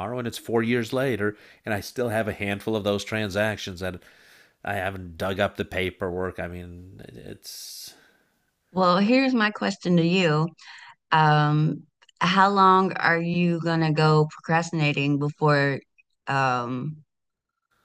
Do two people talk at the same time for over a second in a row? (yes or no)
no